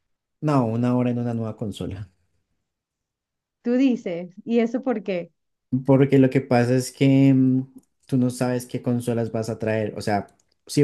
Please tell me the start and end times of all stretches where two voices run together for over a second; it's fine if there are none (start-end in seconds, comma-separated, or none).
none